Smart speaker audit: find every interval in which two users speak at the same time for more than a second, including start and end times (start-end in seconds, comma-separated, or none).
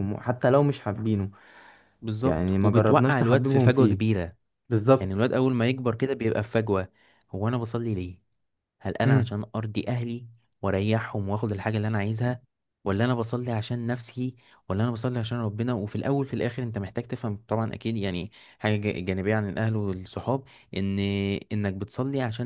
2.2-4.0